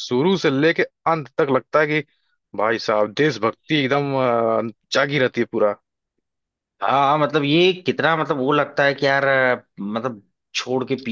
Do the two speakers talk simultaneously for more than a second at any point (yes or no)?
no